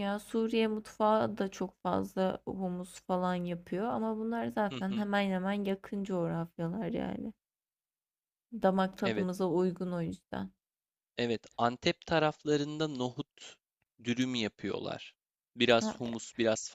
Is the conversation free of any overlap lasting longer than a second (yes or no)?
yes